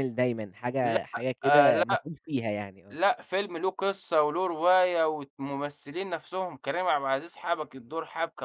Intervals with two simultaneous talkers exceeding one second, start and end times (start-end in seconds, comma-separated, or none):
0.8-2.1